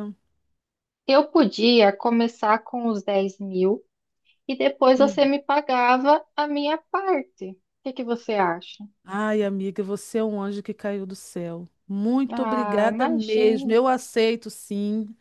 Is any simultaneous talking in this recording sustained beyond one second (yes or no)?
yes